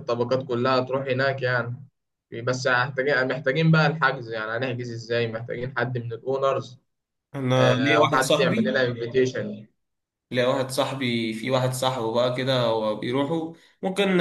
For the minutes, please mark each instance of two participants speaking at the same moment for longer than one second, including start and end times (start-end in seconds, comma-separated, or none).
7.6-8.8